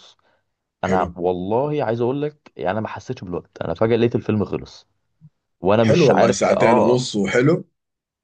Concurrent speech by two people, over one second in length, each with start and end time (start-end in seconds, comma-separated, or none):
5.8-7.0